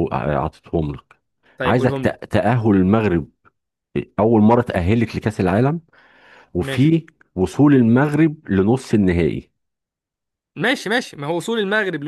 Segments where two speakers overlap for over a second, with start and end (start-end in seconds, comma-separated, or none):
none